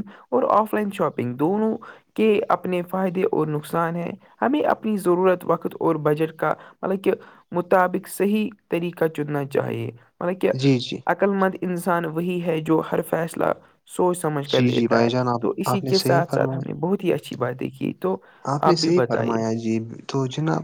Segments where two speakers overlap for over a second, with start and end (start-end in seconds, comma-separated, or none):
14.6-16.7